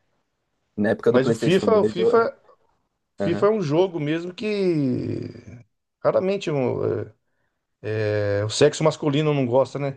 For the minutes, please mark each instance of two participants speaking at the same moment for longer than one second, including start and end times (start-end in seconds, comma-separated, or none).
1.1-2.3